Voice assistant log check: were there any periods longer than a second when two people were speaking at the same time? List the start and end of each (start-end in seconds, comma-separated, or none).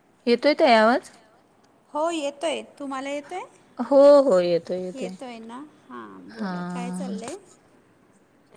none